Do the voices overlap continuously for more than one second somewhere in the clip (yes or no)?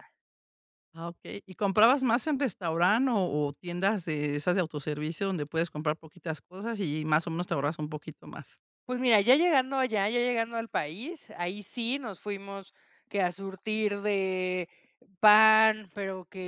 no